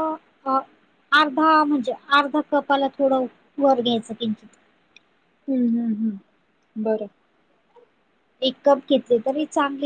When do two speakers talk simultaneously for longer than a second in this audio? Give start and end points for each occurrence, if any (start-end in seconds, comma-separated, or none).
none